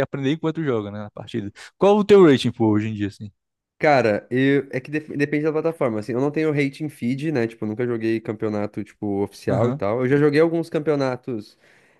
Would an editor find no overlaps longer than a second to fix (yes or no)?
yes